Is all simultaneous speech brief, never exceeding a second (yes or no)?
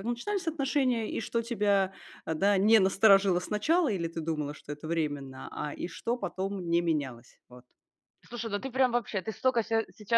yes